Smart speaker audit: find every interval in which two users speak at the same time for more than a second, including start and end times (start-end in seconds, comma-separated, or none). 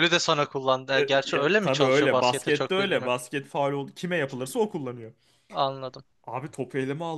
0.9-3.1